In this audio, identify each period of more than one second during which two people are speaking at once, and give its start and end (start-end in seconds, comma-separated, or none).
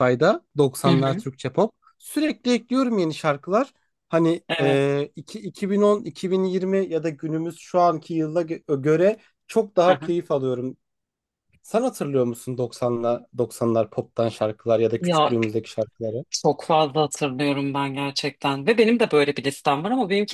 none